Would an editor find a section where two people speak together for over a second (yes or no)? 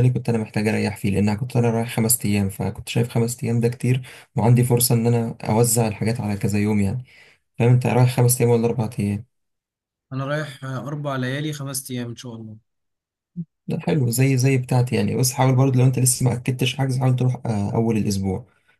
no